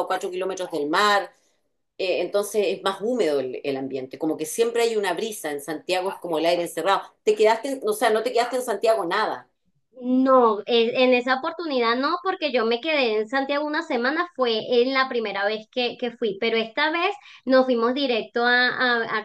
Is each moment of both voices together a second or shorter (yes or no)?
yes